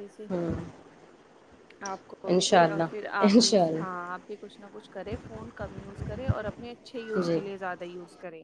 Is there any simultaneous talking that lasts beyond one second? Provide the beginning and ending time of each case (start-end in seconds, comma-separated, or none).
2.4-4.0